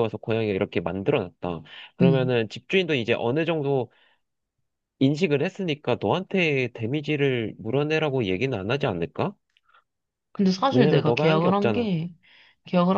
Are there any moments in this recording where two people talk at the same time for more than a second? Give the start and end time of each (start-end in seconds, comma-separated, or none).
10.7-11.9